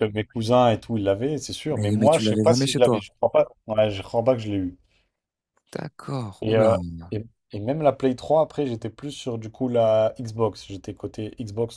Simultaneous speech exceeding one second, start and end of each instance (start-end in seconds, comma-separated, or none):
1.7-3.0